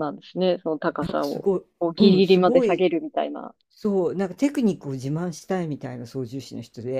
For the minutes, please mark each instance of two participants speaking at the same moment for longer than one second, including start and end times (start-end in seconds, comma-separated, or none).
1.0-2.9